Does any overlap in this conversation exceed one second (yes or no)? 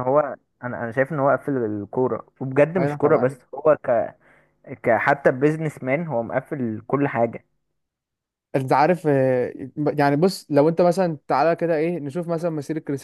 no